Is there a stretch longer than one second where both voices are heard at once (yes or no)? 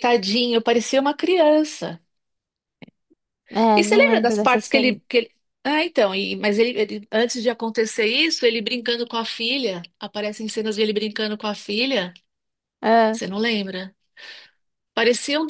yes